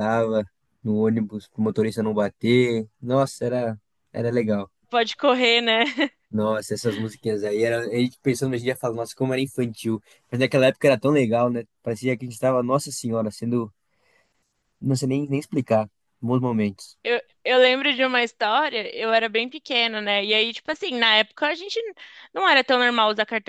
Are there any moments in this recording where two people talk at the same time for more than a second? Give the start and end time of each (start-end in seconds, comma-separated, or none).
none